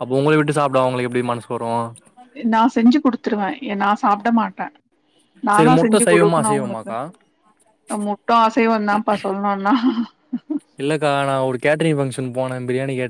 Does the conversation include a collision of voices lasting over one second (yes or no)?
yes